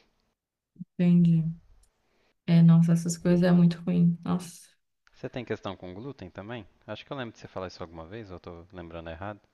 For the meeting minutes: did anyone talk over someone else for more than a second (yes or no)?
no